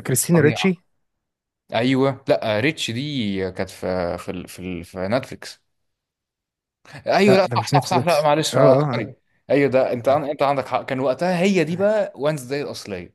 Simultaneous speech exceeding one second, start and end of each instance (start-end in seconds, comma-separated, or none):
7.3-9.1